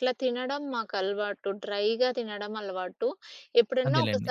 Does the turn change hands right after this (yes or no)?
no